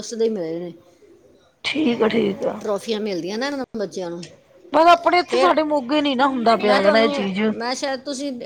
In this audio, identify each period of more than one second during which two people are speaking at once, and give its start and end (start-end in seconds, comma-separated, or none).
none